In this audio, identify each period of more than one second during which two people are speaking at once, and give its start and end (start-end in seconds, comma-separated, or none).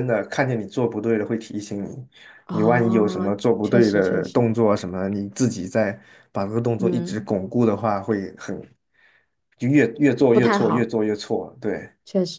2.5-4.5